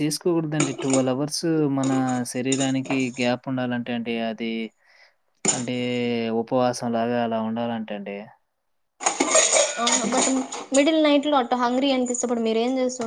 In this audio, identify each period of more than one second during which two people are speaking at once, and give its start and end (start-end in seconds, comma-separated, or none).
none